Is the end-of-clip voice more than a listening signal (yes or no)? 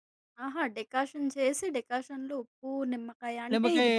no